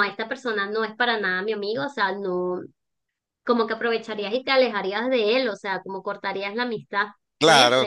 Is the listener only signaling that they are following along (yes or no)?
no